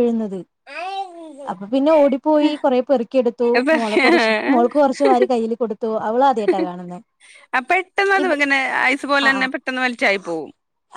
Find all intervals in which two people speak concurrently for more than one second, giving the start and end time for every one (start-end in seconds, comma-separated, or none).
none